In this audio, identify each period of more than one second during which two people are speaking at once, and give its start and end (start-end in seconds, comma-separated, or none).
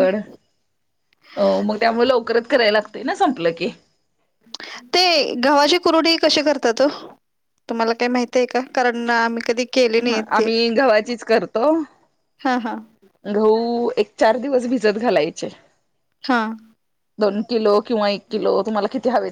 none